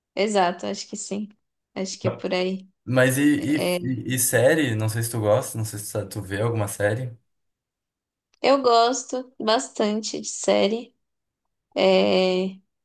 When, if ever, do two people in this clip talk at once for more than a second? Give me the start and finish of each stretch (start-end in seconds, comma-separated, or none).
none